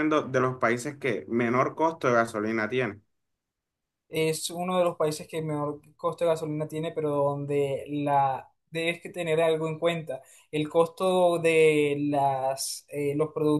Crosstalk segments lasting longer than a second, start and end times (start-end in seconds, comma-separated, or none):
none